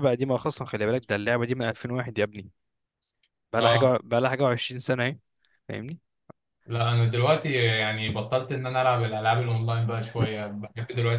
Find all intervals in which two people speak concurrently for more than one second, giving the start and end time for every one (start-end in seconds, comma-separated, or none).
none